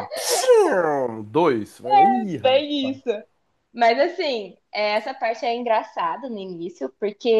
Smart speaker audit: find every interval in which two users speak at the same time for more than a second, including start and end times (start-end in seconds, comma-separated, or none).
none